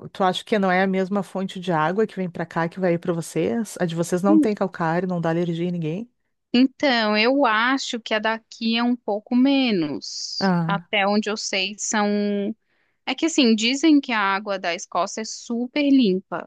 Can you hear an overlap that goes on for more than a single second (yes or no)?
no